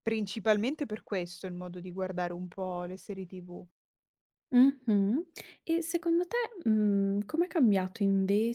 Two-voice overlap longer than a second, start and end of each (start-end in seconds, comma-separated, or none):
none